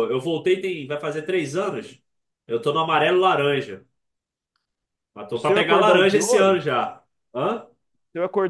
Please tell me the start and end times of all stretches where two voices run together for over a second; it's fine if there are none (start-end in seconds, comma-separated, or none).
5.3-6.6